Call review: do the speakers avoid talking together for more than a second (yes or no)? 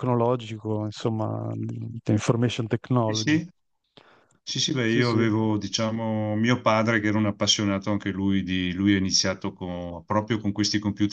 yes